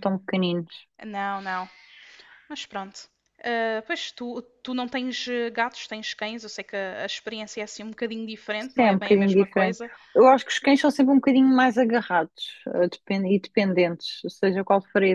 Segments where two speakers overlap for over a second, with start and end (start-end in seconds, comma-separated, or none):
8.6-9.8